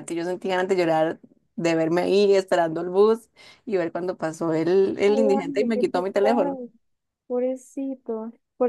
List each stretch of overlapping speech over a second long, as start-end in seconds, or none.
5.0-6.6